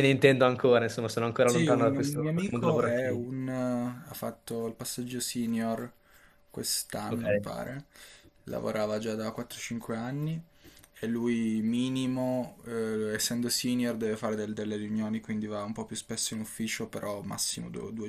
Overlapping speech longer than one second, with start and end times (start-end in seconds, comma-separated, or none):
1.4-3.2